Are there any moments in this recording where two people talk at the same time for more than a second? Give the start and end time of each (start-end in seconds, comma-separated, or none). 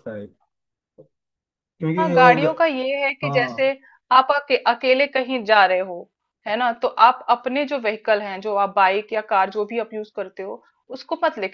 none